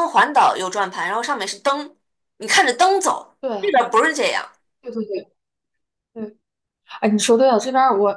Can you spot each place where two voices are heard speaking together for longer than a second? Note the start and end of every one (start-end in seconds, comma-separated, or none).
none